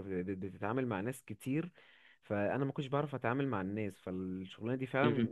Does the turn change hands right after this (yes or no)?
no